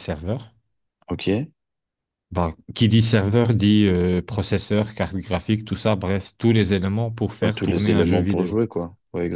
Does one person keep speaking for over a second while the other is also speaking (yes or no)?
yes